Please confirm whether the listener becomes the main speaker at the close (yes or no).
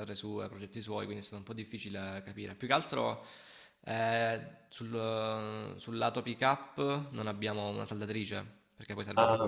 yes